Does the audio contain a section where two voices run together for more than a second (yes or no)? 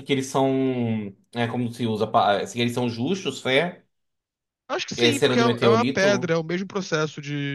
yes